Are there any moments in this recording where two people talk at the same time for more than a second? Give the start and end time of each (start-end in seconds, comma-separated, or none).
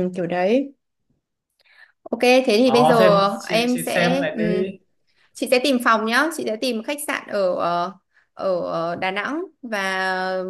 2.6-4.4